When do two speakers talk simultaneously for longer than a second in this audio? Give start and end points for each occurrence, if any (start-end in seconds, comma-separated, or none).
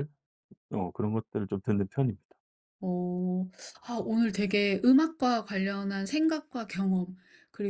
none